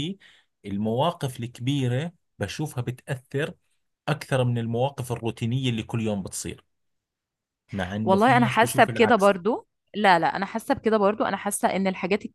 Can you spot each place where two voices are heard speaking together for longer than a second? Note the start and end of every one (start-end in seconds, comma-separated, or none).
8.0-9.4